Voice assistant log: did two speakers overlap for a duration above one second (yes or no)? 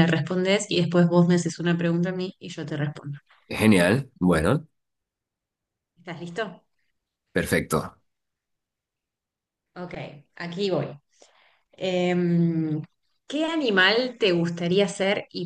no